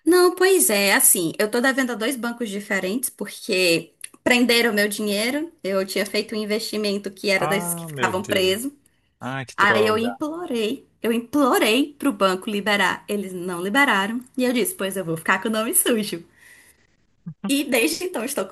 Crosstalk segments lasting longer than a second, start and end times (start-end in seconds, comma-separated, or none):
7.4-8.6